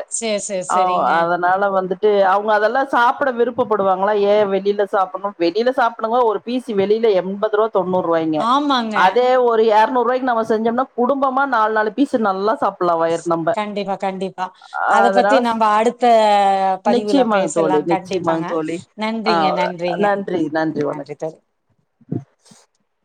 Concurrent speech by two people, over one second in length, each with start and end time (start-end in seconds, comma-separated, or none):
17.0-18.5